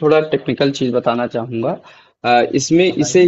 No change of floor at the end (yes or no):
yes